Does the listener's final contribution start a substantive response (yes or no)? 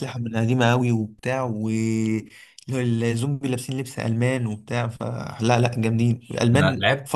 yes